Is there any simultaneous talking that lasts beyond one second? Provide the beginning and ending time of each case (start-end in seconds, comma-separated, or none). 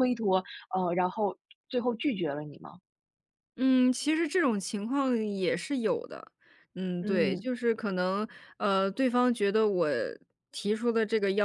none